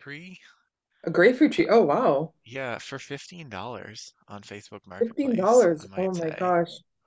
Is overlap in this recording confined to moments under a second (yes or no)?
no